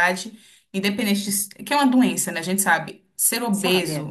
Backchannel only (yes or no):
yes